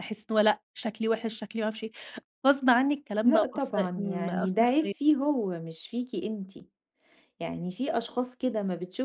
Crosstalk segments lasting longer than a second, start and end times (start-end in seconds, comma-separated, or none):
3.2-4.9